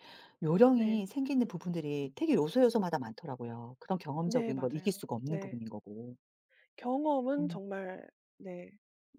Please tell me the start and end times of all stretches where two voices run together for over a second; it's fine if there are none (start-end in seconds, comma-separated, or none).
4.2-5.6